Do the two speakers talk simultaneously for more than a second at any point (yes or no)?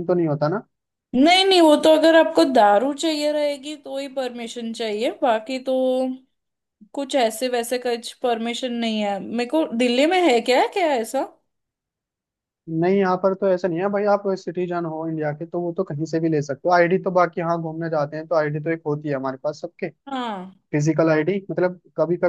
no